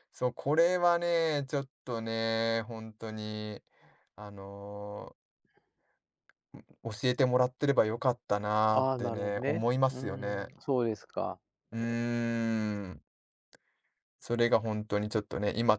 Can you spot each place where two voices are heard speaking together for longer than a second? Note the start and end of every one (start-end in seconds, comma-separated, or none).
8.7-10.5